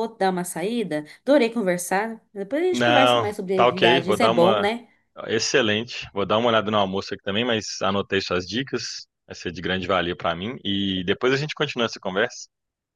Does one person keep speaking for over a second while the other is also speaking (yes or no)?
yes